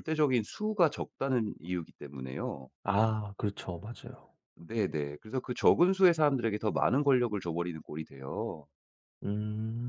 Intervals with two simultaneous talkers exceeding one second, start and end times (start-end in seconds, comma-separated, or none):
none